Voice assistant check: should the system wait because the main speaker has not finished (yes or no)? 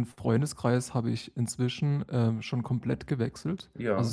yes